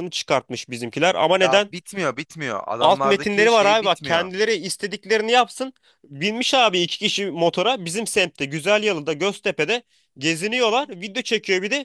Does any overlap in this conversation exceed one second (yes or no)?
yes